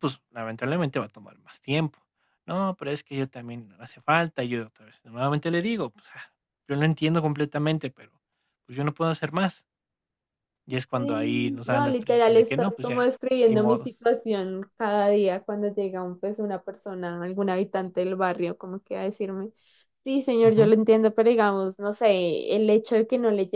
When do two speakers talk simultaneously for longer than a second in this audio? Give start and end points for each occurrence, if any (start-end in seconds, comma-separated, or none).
10.9-14.0